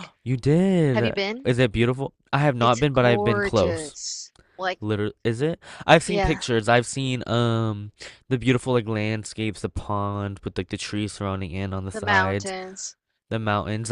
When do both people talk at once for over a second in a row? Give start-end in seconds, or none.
2.6-4.0